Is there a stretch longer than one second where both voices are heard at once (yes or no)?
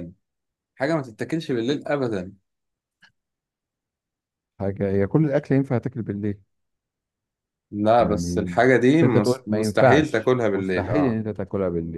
yes